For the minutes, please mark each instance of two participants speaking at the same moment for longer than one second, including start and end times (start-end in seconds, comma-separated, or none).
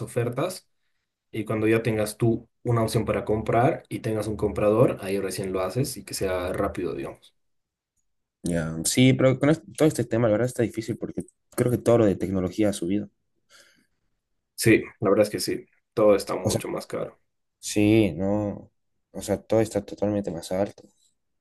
none